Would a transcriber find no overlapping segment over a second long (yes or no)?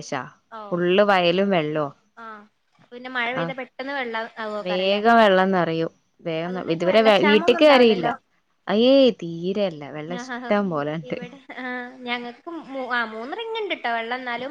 no